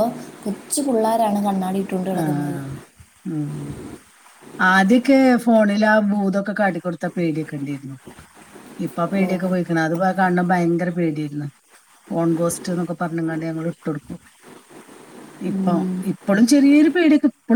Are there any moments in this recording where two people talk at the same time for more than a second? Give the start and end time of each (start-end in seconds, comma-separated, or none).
none